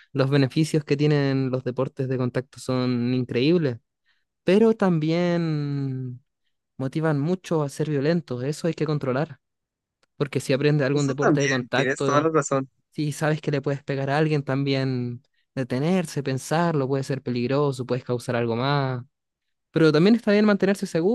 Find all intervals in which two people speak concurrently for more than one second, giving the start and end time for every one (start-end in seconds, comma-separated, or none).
10.9-12.3